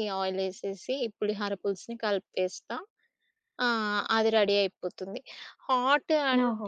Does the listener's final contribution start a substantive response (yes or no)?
no